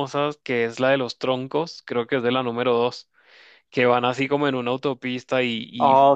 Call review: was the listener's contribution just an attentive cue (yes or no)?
yes